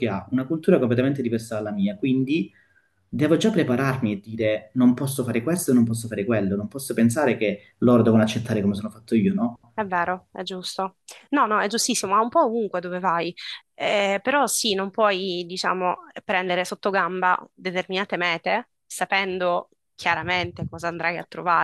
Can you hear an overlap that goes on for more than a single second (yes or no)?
no